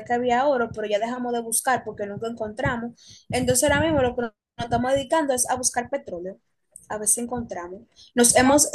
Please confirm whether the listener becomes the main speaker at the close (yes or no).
no